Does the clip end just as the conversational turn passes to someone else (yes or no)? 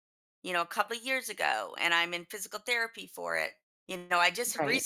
no